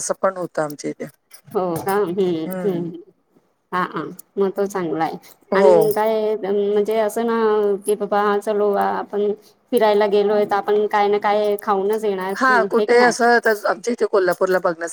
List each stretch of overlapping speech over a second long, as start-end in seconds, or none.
none